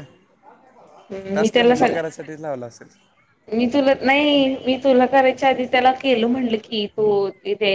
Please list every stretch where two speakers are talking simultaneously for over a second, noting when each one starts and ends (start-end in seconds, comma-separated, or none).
none